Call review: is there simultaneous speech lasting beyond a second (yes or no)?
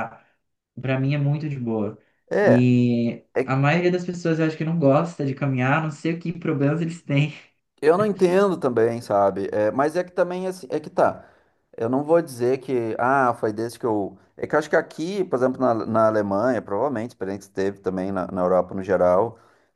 no